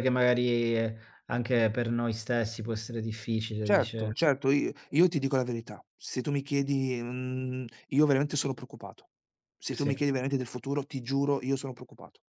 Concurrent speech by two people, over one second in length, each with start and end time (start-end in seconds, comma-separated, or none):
none